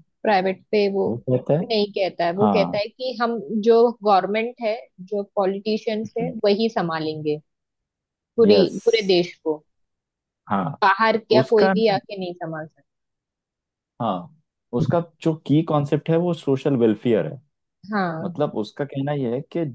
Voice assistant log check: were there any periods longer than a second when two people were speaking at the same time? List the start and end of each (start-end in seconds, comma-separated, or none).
none